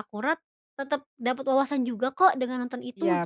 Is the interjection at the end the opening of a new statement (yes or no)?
yes